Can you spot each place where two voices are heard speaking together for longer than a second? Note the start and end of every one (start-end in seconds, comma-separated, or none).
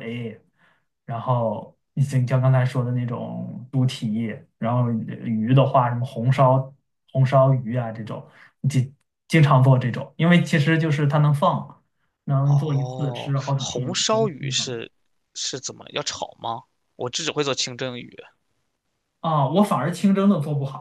12.4-14.8